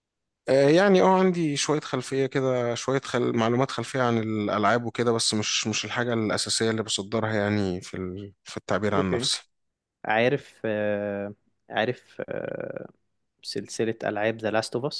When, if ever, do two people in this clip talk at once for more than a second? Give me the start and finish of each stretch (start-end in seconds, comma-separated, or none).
none